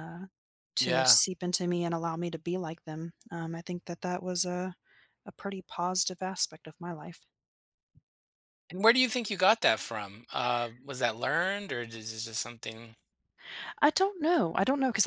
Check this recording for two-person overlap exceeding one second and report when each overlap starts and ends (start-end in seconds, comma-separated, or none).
none